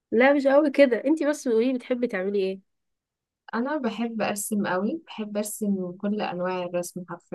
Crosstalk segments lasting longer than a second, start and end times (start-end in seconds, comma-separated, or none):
none